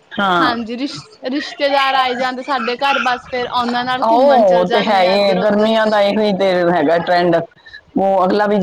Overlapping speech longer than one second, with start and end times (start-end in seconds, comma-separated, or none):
4.0-5.7